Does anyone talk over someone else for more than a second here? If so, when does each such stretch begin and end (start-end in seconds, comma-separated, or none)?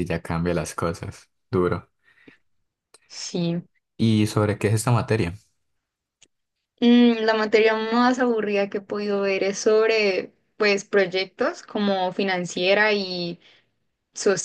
none